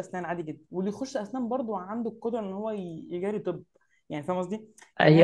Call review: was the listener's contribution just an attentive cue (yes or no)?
no